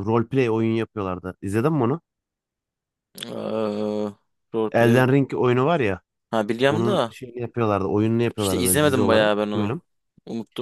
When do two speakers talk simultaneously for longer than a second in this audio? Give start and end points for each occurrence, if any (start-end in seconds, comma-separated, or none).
8.4-9.8